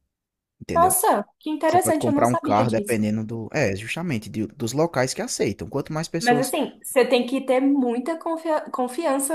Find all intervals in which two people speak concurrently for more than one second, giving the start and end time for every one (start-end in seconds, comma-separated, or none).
1.6-3.0